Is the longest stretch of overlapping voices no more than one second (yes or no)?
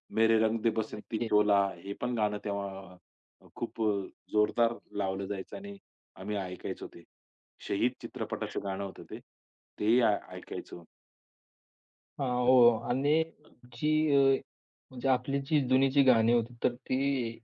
yes